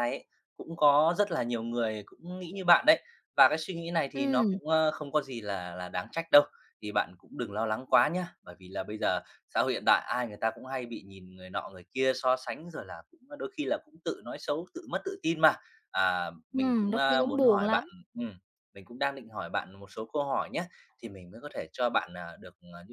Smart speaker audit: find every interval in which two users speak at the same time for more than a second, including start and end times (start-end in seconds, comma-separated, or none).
16.5-17.9